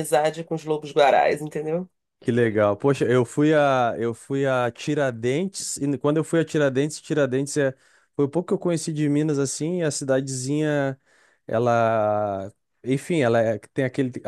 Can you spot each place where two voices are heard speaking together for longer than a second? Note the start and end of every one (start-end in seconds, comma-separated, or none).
none